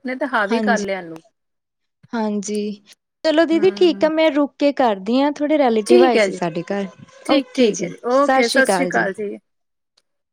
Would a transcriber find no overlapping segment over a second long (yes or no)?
no